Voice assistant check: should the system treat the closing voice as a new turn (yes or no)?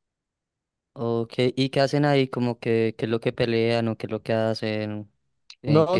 yes